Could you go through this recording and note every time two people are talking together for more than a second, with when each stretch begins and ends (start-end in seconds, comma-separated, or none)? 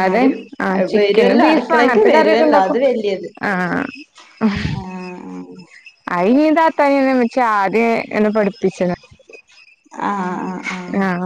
0.9-2.8